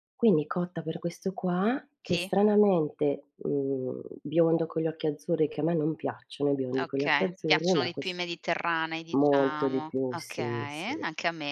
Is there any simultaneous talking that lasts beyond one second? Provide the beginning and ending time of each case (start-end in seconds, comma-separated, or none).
6.8-8.2, 9.1-10.9